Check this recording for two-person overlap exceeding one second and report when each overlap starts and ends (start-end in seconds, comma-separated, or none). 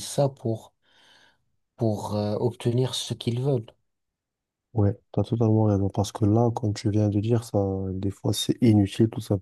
none